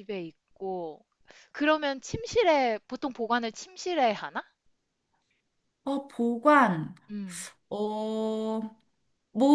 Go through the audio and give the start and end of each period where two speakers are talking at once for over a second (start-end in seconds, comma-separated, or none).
none